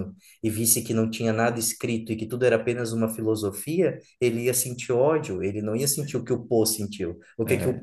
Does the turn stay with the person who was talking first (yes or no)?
yes